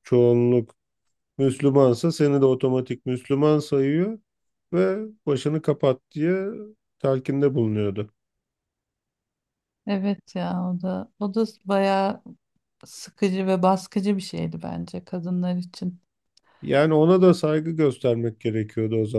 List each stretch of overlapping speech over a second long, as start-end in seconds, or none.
none